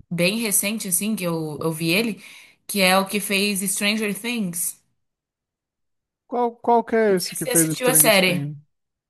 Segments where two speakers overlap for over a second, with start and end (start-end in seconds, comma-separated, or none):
7.1-8.5